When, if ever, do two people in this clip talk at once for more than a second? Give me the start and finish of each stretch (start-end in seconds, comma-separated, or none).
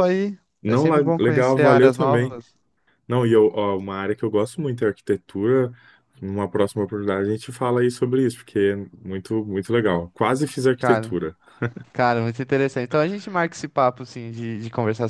0.6-2.3